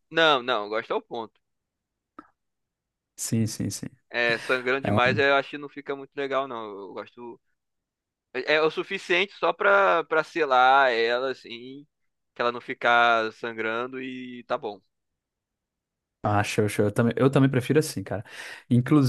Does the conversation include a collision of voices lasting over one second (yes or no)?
no